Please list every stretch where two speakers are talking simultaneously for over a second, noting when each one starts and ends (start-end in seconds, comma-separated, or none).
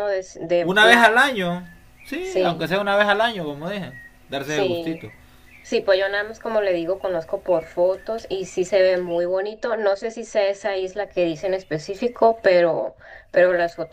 none